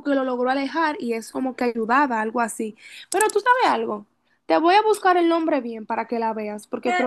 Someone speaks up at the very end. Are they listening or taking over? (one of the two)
taking over